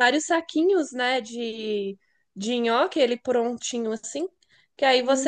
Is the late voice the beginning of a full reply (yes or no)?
no